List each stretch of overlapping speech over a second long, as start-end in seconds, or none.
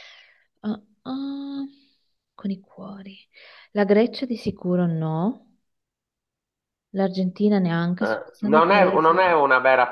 8.0-9.3